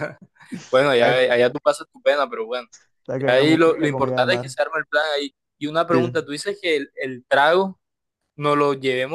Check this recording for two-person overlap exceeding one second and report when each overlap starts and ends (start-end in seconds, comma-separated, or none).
3.2-4.5